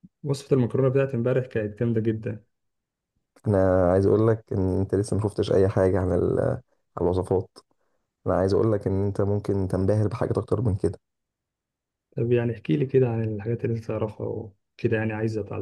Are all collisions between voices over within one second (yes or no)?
yes